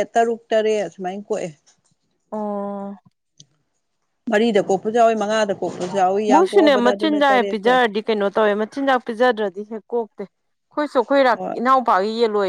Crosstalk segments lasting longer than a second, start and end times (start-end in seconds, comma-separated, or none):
6.3-7.8